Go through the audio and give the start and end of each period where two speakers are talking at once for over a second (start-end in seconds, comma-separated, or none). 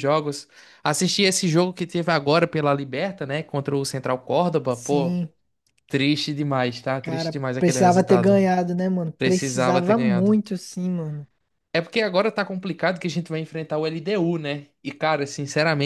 7.0-8.4, 9.2-10.4